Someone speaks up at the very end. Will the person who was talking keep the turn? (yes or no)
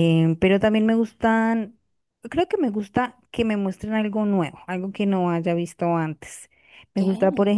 yes